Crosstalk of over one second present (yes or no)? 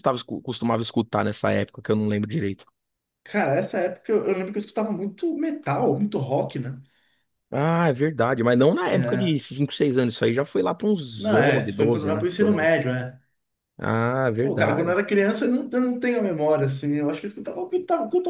yes